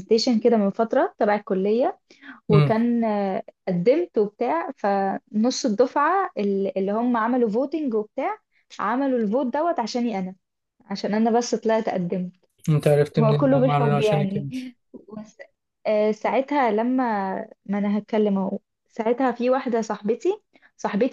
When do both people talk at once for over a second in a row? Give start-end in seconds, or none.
13.2-14.5